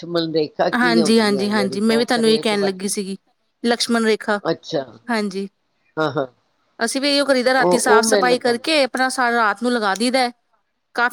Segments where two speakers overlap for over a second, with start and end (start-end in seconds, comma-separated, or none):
0.8-2.9, 7.6-8.9